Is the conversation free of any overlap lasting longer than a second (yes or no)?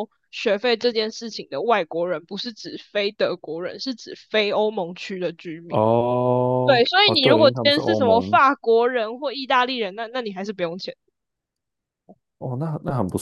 no